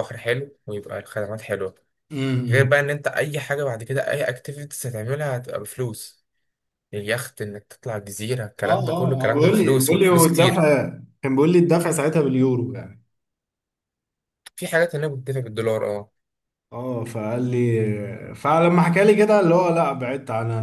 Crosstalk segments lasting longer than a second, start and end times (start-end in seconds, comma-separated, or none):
8.7-10.7